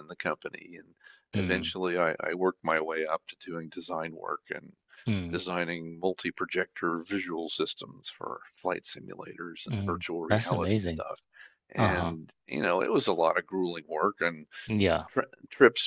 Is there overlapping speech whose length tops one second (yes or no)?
yes